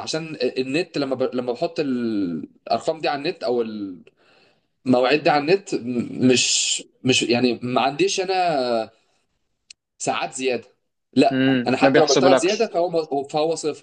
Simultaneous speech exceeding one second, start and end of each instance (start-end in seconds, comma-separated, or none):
11.3-12.7